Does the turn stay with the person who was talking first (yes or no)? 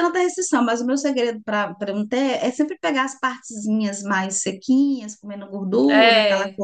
yes